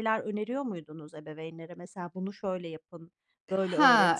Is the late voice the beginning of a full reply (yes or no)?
yes